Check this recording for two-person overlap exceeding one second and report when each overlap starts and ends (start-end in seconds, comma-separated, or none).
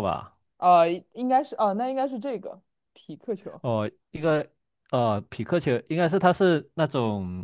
none